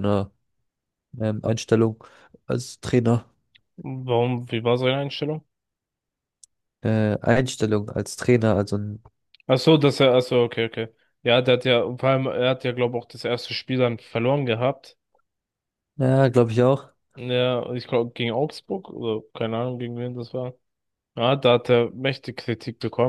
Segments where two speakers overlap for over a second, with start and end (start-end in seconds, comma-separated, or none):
none